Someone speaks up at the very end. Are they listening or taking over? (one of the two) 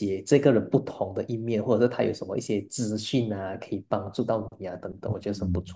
taking over